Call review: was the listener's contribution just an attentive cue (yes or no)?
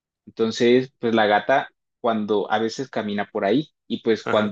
yes